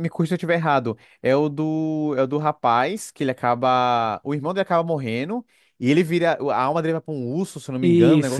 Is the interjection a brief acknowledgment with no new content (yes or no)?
no